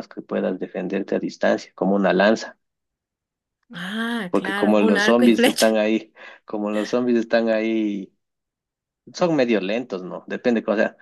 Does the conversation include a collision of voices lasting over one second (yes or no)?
yes